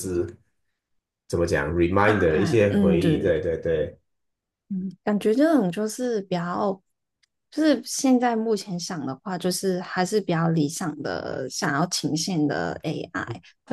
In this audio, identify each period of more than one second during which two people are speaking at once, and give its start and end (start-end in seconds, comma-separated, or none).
2.0-3.4